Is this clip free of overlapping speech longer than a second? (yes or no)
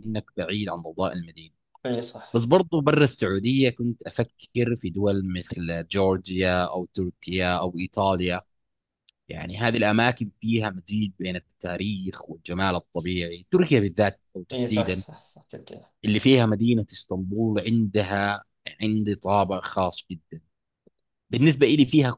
yes